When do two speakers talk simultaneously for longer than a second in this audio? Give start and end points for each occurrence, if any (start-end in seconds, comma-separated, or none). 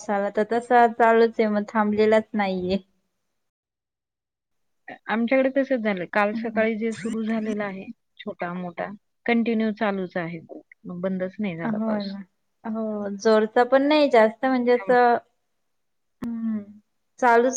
none